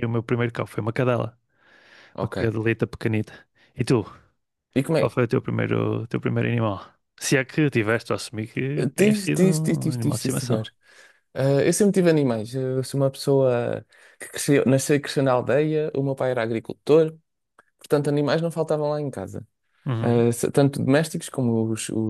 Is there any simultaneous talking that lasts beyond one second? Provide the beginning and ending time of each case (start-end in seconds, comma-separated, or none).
9.0-10.6